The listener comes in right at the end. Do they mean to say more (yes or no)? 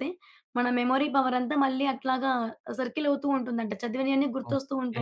yes